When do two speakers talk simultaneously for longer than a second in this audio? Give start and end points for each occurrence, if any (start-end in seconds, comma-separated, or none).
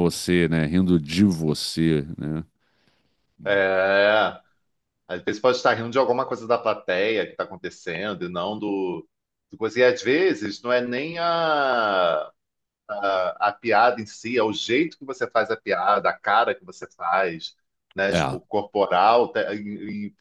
none